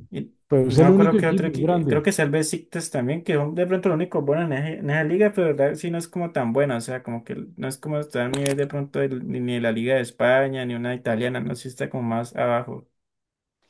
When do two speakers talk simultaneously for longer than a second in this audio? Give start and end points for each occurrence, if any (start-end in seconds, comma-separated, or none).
0.7-2.1